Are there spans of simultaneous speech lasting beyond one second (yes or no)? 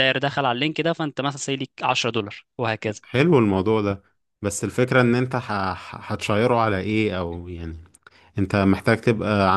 no